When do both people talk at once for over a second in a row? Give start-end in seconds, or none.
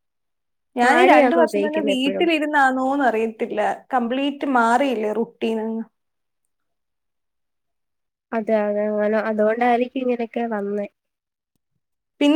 0.8-2.3